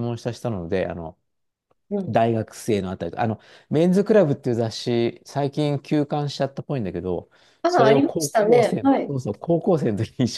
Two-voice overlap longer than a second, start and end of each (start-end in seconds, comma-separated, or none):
7.7-9.2